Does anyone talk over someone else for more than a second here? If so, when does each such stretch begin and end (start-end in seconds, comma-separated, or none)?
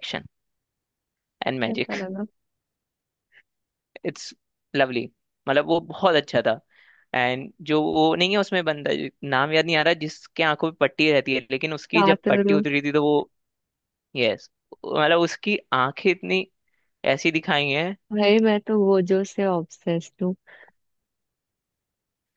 none